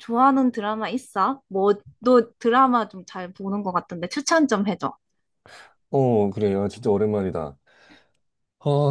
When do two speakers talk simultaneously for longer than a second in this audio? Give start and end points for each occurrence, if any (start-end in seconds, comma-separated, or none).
none